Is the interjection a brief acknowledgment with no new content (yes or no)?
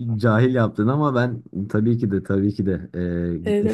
no